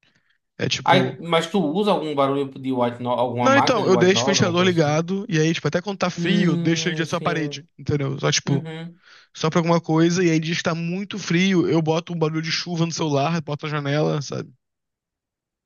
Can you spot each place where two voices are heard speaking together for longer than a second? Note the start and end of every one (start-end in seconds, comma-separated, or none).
3.4-5.0, 6.2-7.6